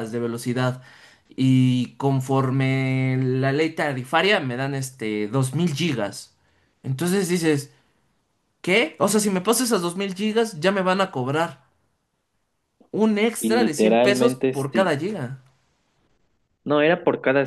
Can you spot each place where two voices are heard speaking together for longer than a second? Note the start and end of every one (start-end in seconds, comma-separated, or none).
13.4-14.9